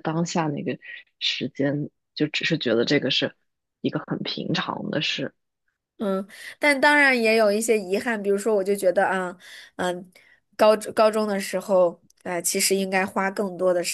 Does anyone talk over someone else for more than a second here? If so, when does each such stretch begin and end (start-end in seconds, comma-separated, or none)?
none